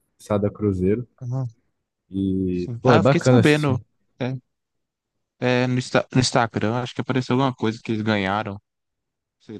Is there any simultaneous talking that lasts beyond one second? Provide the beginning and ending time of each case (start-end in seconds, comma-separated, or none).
2.5-3.8